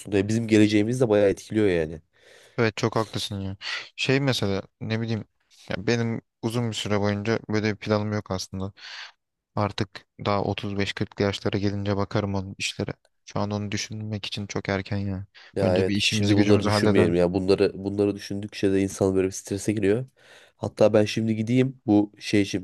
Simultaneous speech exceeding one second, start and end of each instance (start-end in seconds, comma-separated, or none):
15.6-17.1